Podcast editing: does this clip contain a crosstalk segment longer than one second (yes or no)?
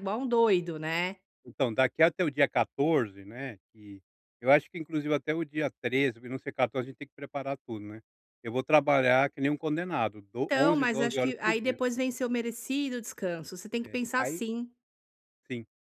yes